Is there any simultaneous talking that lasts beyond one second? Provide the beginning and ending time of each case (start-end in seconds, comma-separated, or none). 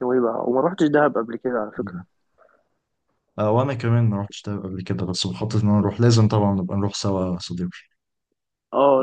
none